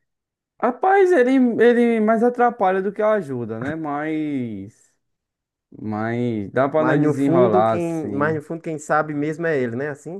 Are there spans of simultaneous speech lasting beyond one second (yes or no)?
yes